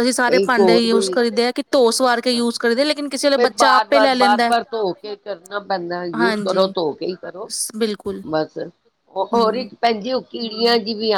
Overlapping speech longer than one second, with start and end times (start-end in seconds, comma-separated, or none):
none